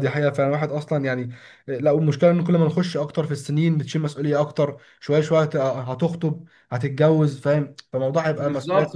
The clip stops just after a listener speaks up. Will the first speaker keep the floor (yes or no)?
no